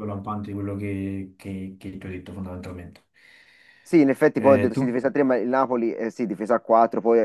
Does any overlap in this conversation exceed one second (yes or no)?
no